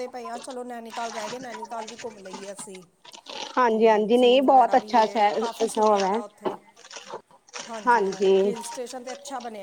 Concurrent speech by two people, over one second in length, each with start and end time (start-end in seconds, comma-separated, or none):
3.7-6.1